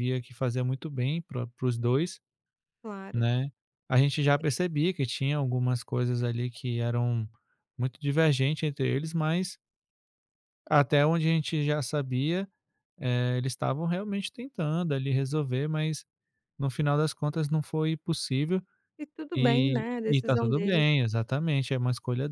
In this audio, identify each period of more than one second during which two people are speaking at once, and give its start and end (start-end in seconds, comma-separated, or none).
19.4-20.9